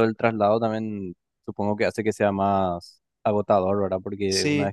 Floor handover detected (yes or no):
no